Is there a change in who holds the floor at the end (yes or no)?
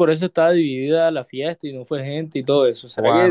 yes